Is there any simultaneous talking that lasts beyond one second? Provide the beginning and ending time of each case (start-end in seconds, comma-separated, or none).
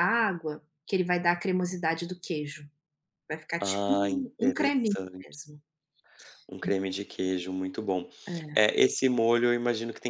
3.6-5.4